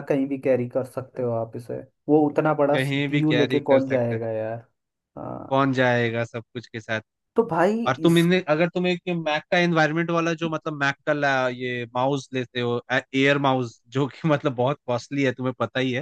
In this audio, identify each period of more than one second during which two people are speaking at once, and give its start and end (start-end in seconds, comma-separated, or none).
2.7-4.2